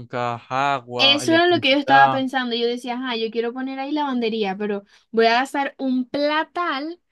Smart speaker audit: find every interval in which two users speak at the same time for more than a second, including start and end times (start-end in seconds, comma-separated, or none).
1.0-2.2